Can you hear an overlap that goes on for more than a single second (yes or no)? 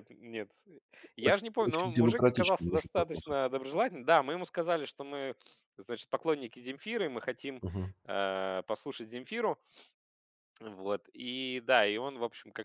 yes